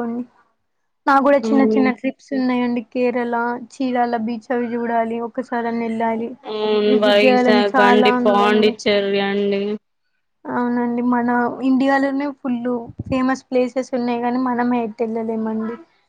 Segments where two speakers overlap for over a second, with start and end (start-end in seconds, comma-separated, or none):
6.9-8.8